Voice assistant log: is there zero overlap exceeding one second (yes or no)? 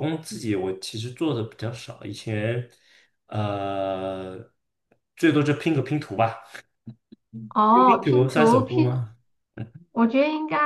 no